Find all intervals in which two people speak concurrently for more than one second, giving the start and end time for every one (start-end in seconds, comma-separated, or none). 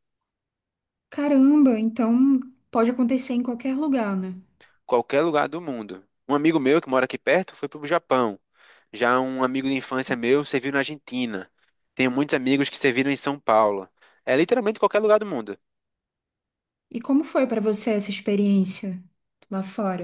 none